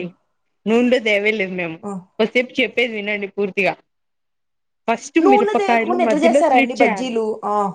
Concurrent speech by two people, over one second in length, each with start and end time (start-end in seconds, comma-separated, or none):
5.2-7.1